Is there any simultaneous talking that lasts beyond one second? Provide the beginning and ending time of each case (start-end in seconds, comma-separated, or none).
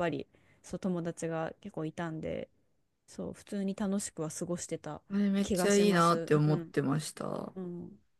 5.4-6.7